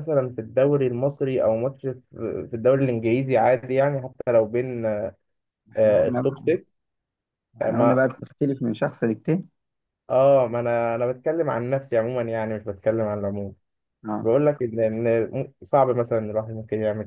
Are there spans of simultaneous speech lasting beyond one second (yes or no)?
no